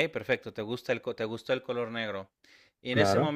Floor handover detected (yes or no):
no